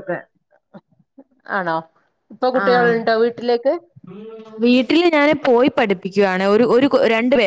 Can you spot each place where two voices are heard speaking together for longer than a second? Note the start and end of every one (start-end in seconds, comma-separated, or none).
none